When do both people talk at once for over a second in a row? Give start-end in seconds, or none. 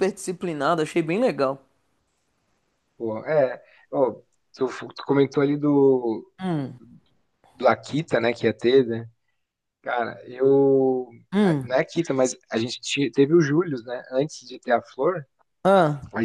none